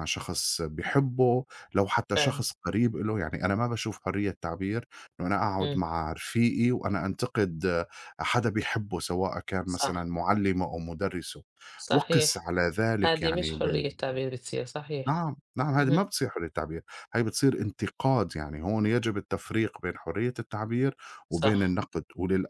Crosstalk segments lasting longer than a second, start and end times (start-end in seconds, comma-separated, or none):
none